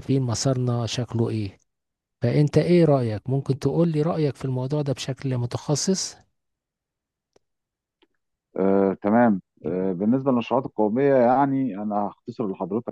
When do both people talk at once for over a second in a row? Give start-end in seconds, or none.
none